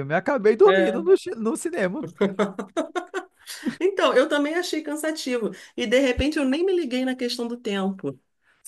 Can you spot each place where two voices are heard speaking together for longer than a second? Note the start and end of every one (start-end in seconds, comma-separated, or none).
none